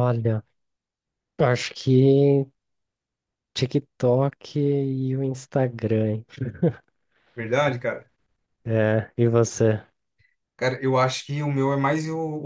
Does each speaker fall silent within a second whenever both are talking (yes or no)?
yes